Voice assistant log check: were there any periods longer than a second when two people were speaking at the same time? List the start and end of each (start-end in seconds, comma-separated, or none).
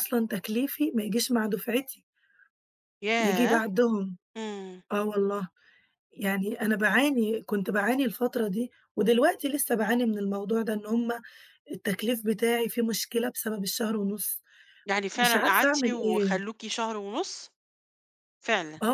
15.2-16.5